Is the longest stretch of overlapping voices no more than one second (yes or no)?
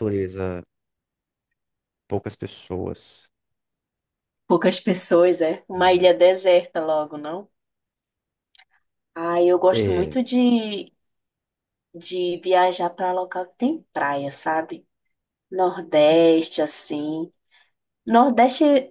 yes